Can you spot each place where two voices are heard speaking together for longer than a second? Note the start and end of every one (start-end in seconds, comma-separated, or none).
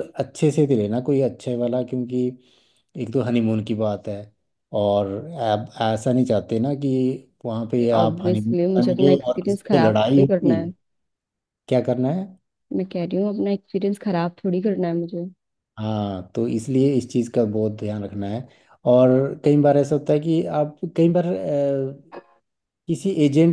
7.9-10.6